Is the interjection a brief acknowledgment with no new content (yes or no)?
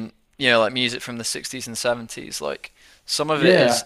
yes